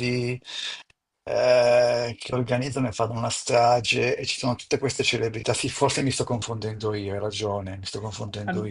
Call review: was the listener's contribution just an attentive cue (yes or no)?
no